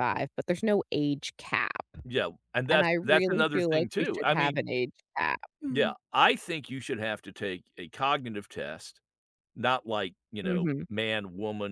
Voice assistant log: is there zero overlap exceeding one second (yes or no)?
no